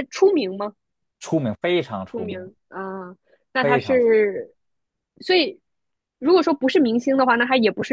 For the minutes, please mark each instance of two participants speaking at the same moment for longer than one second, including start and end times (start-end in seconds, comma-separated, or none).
none